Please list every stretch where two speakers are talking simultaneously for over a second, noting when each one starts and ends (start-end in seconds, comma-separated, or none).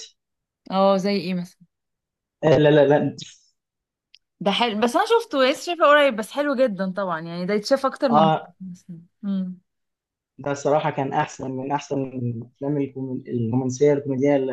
none